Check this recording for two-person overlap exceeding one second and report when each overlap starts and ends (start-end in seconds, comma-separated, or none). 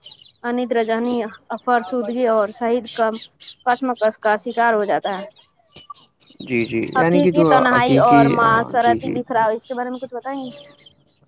7.0-9.1